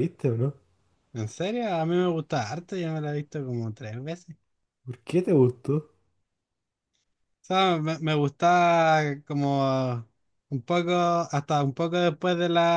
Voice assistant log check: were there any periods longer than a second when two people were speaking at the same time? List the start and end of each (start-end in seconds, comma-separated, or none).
none